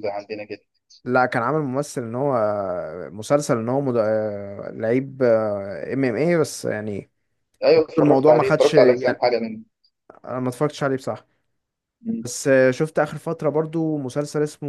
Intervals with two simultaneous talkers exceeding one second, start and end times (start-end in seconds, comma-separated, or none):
8.0-9.2